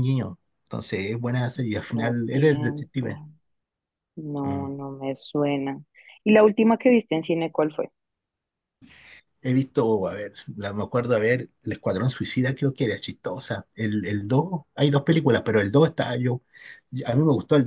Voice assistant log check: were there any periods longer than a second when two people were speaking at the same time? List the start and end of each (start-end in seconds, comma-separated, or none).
1.9-3.2